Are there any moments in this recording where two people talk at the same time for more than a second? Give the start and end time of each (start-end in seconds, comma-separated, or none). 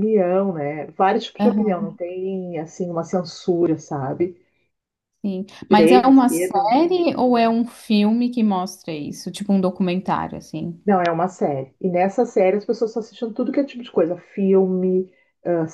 5.7-6.9